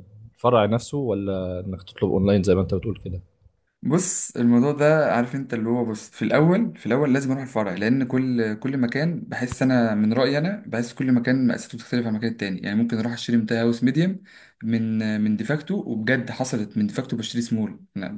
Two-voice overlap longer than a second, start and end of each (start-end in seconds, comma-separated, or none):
none